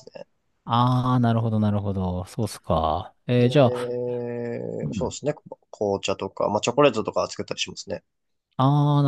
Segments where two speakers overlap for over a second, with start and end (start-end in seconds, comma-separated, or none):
none